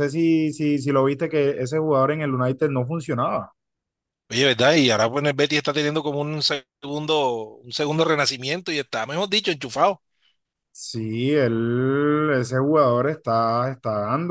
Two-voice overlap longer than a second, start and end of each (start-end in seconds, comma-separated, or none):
none